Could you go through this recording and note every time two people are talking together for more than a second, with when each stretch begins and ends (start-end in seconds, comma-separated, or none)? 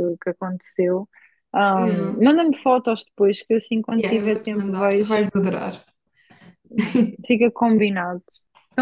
4.0-5.3